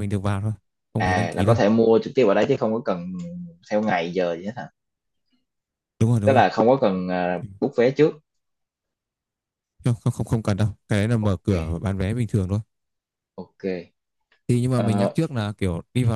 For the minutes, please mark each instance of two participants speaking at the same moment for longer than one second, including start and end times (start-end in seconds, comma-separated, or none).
none